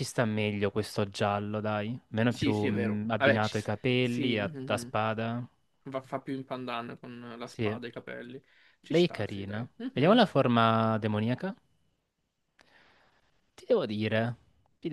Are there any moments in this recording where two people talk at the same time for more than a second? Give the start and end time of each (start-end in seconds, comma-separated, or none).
2.3-4.9, 8.9-10.4